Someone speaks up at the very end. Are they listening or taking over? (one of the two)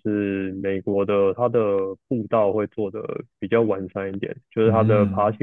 listening